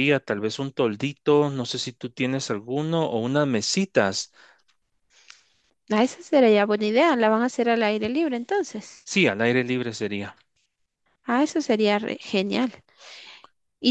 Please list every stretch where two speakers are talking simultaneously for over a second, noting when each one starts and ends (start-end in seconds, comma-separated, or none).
none